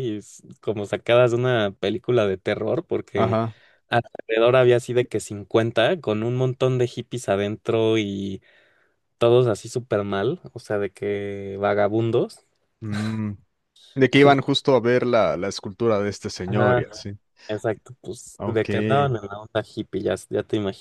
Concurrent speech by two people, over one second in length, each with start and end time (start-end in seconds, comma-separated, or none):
none